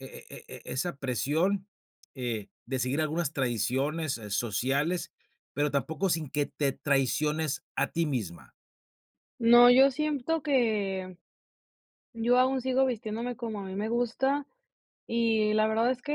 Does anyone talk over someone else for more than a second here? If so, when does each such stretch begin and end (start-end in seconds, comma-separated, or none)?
none